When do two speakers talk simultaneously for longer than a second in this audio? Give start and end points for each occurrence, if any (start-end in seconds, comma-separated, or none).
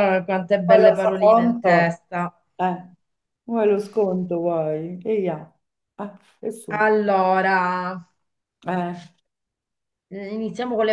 0.7-1.9